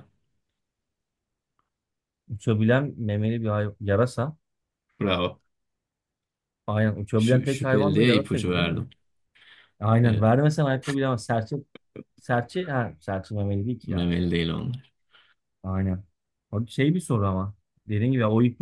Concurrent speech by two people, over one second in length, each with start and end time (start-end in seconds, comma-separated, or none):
7.2-8.8